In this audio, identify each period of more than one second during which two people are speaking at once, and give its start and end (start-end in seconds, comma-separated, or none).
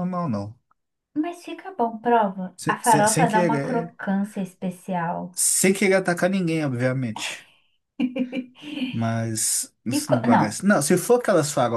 2.6-3.9